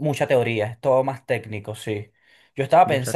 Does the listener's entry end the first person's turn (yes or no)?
no